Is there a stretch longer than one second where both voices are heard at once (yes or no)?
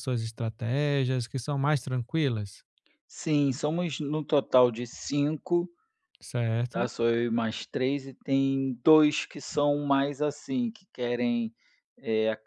no